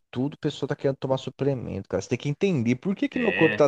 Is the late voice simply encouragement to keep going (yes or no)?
yes